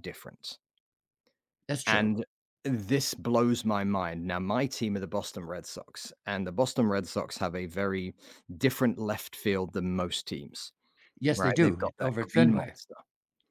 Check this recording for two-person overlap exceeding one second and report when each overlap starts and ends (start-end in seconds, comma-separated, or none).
11.3-12.8